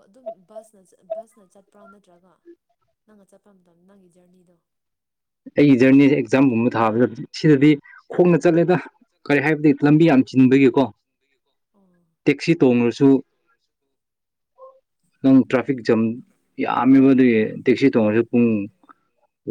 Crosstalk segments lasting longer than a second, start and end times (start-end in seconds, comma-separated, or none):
none